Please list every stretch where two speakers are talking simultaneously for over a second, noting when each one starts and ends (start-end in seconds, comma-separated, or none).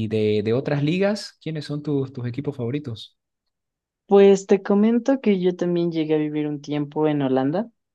none